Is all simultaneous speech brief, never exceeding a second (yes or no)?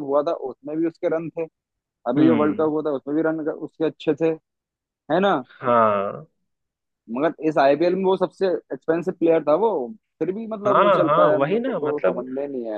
no